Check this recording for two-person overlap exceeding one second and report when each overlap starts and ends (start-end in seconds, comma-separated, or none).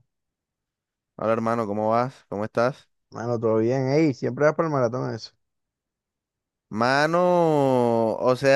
none